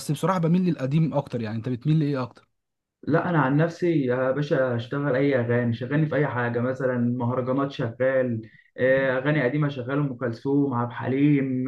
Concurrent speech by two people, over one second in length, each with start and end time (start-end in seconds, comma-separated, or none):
none